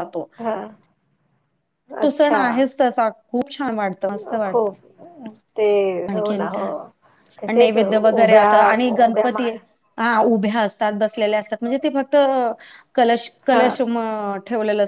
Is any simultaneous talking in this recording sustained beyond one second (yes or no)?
yes